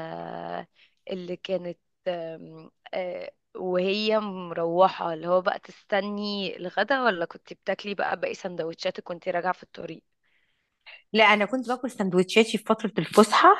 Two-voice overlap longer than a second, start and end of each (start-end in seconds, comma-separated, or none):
none